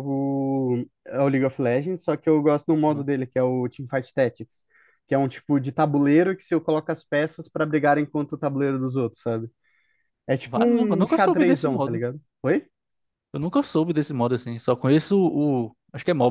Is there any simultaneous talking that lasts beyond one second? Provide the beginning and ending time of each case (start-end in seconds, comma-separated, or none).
10.4-12.1